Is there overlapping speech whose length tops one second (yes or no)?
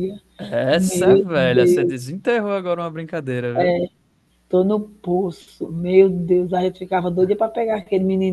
yes